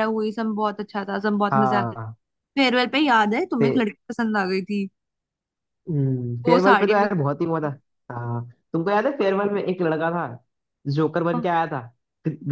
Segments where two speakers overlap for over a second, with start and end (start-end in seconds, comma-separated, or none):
6.5-7.7